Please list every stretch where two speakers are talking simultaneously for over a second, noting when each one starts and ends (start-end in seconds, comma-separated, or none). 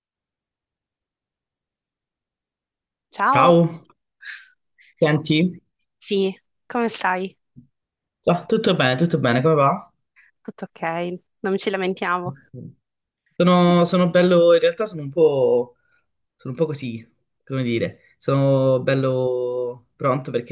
none